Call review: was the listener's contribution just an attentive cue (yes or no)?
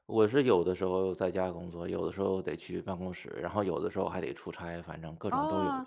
no